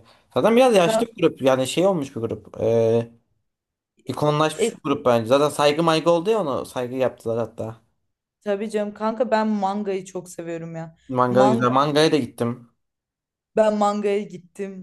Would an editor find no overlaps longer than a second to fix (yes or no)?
yes